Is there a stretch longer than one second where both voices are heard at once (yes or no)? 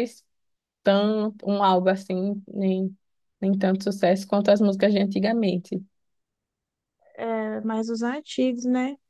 no